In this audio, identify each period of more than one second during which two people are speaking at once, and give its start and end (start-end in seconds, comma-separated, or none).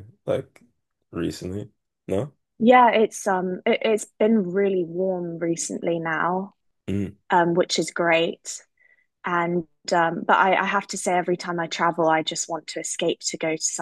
none